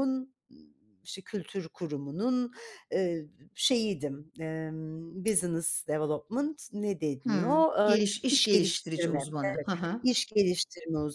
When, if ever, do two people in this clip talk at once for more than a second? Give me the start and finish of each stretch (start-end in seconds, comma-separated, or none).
7.2-9.2